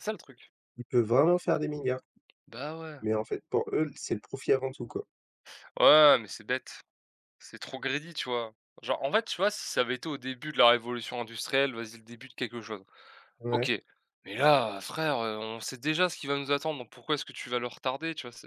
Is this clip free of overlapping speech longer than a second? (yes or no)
yes